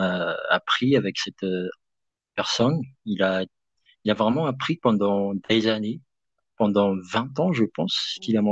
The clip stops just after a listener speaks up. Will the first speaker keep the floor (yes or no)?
yes